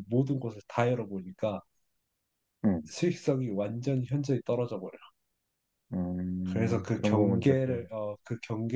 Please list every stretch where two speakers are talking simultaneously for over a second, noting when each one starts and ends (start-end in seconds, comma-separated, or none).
6.4-7.9